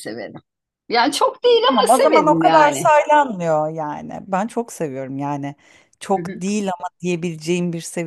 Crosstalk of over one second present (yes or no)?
yes